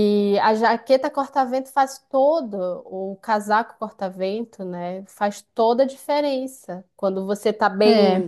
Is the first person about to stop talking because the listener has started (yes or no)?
no